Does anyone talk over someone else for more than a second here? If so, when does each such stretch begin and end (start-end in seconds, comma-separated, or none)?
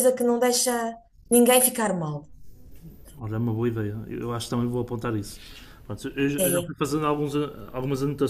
none